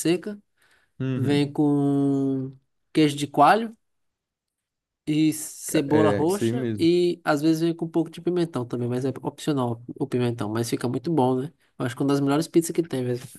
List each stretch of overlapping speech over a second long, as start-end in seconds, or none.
5.7-6.9